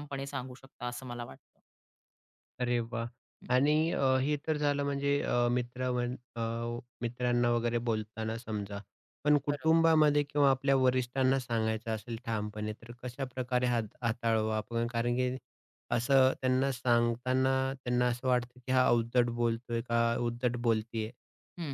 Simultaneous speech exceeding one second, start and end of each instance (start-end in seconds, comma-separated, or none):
none